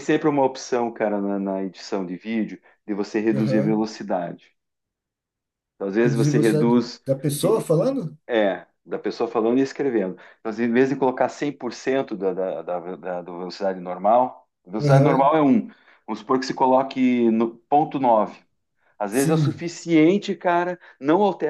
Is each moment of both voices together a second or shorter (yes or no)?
no